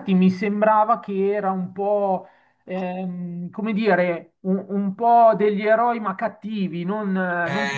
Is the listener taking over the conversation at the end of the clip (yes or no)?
yes